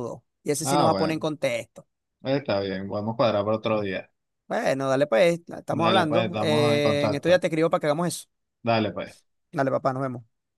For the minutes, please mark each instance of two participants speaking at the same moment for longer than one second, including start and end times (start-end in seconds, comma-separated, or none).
5.7-7.4